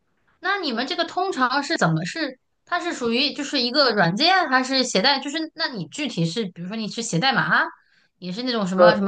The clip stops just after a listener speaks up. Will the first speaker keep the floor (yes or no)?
yes